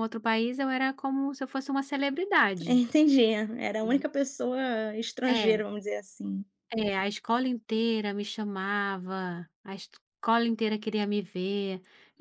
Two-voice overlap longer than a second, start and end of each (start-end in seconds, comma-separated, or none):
none